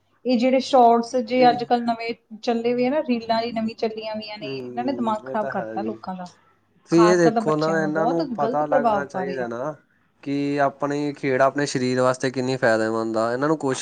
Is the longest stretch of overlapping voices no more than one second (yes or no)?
no